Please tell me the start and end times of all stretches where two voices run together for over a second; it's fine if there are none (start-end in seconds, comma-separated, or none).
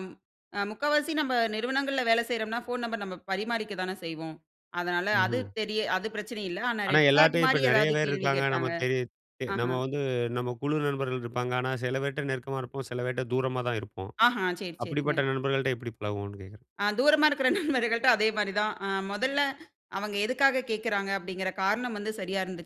6.9-8.7